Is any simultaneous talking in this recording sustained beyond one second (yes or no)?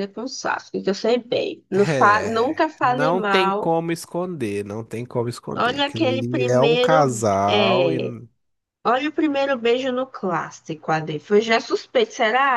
yes